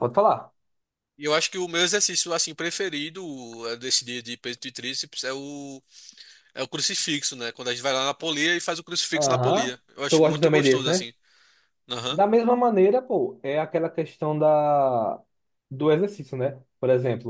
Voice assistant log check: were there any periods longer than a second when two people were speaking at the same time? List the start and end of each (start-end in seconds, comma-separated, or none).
9.2-11.1